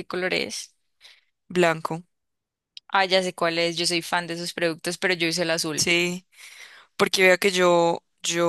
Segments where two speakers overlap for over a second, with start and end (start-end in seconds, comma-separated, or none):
none